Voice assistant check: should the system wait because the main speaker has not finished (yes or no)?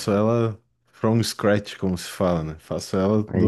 yes